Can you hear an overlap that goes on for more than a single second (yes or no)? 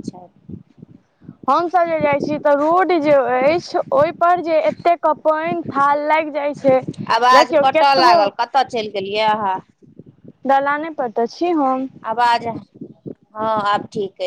no